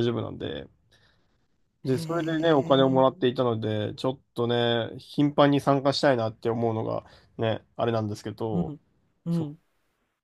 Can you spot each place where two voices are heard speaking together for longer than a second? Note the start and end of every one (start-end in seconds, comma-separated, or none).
1.9-3.2